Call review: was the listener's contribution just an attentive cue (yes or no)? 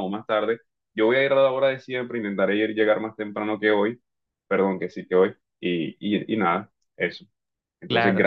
no